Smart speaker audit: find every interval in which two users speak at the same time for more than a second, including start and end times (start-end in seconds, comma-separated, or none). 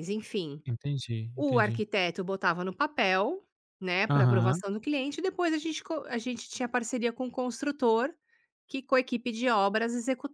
none